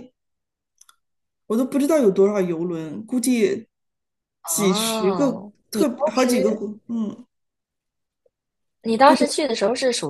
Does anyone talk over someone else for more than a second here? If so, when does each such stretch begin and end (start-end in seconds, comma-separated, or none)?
4.4-6.3